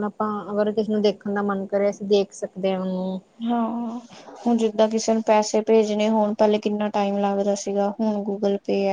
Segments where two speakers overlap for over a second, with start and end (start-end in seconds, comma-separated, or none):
none